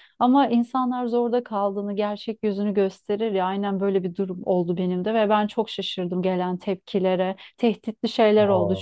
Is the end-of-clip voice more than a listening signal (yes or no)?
no